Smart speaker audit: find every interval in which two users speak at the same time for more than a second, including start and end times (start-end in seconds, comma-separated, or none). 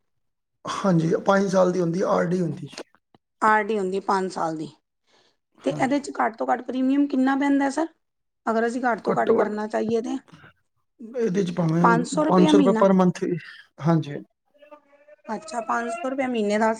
none